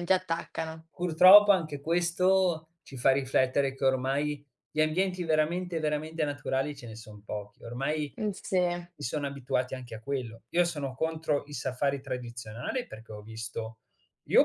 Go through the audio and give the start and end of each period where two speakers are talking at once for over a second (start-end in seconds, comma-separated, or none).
none